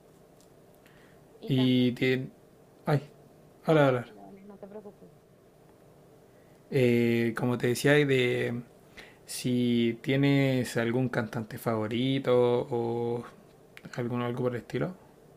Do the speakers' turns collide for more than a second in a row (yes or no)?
no